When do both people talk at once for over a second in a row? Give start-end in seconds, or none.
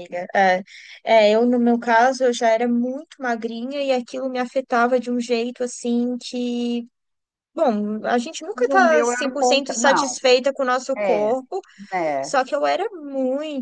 8.6-9.8